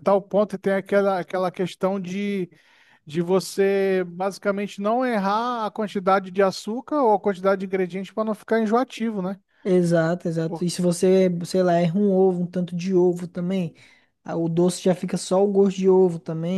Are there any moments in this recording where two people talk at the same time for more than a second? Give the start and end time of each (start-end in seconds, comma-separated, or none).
none